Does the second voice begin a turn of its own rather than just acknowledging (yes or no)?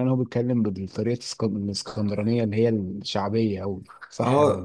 yes